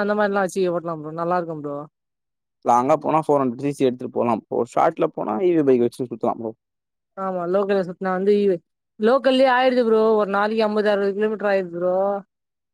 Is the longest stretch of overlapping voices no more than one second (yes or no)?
yes